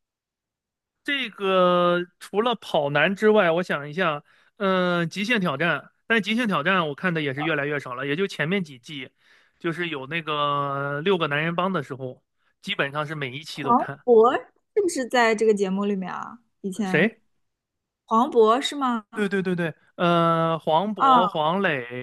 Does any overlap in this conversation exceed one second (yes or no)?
no